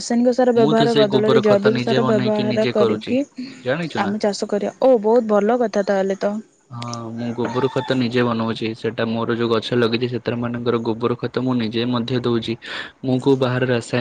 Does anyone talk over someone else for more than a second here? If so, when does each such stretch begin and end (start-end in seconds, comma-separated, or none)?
0.6-3.1